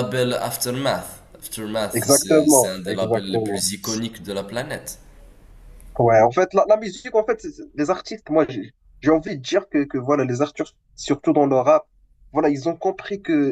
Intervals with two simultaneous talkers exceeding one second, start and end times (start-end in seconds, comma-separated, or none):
1.9-3.7